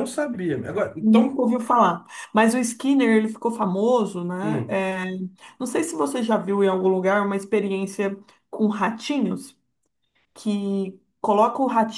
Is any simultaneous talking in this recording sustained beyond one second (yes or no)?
no